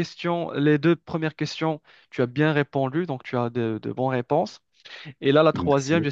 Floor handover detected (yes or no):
no